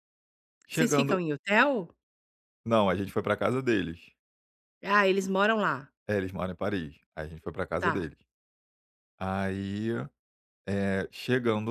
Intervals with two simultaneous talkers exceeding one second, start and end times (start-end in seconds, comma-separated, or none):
none